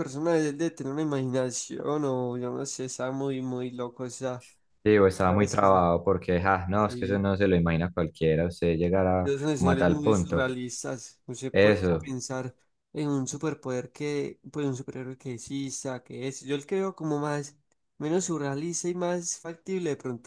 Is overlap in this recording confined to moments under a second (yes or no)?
no